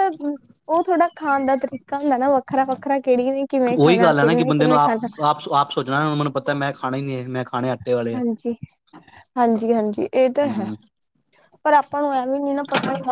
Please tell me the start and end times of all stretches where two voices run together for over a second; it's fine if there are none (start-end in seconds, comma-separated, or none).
3.8-5.1